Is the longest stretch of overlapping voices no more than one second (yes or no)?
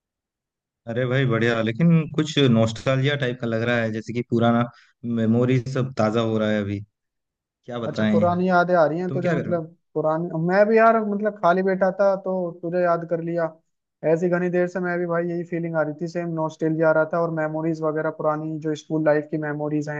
yes